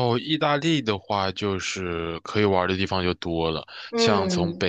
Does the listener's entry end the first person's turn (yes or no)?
no